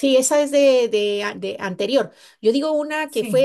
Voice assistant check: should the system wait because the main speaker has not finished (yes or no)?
yes